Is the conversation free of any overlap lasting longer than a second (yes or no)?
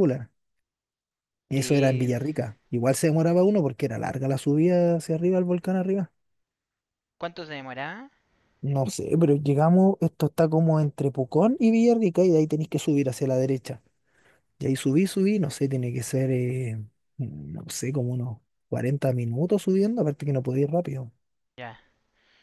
yes